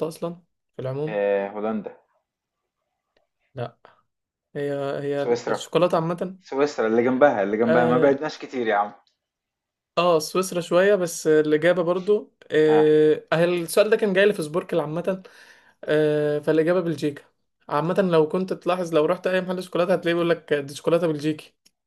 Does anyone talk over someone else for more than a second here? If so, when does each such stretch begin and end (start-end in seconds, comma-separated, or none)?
none